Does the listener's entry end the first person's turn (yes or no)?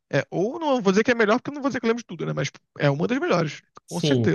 yes